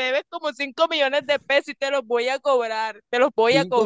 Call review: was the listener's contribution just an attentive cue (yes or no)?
no